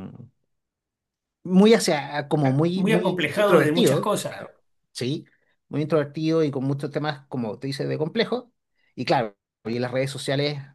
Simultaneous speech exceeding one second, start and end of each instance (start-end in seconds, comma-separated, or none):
2.4-4.5